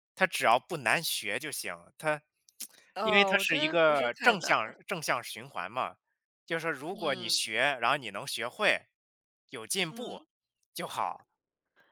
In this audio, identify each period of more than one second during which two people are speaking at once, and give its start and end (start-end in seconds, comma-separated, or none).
3.0-4.5